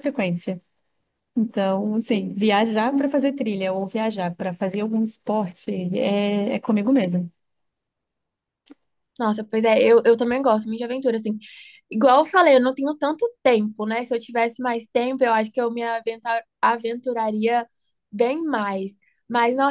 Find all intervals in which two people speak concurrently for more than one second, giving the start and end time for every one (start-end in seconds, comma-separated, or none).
none